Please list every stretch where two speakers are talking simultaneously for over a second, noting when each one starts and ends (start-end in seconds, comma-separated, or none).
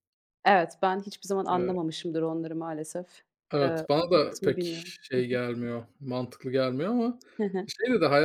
3.6-5.4